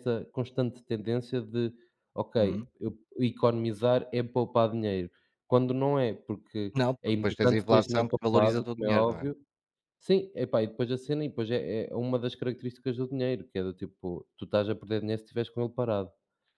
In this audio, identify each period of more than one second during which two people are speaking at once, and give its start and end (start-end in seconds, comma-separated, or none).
6.7-9.2